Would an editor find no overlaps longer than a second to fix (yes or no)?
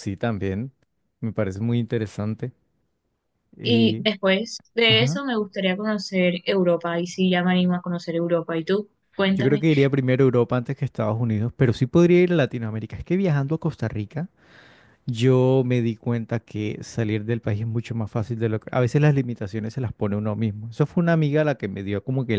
yes